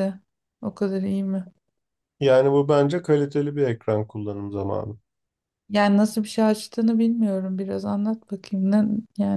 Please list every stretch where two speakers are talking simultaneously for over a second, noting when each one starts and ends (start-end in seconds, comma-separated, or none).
none